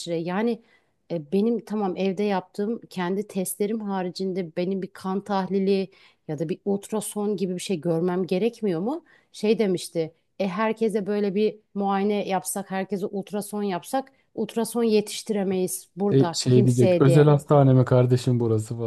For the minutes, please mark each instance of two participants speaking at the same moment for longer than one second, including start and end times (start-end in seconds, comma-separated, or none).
16.1-17.3